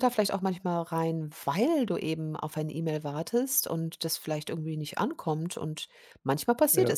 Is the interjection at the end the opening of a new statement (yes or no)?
no